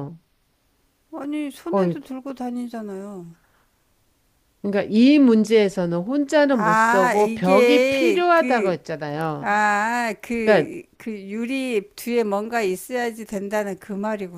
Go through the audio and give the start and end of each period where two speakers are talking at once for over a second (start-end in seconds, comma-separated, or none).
6.5-8.8